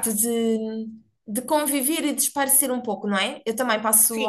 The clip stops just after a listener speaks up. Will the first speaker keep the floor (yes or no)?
no